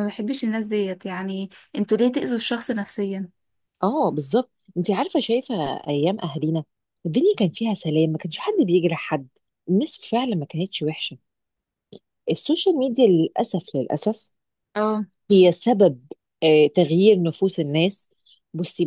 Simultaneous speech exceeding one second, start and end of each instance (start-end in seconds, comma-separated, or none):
none